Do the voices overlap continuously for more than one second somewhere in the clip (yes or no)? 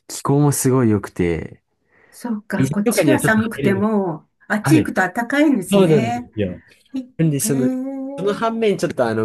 yes